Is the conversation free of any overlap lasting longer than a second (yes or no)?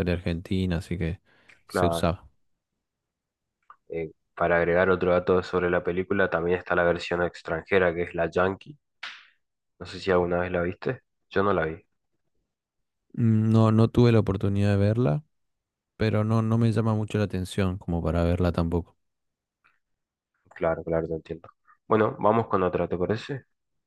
yes